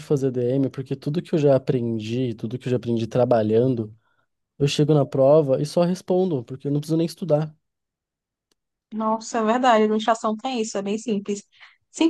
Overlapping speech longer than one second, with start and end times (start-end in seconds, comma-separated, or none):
none